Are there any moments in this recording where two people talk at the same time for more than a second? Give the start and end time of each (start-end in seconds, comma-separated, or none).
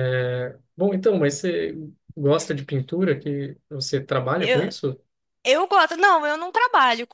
none